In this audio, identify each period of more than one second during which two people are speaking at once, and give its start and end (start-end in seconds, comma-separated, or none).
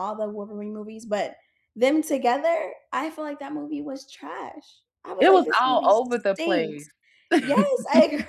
5.2-6.9